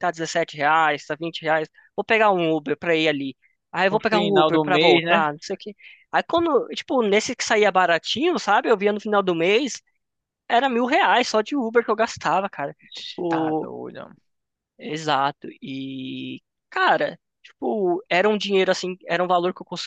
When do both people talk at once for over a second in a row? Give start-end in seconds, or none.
3.9-5.3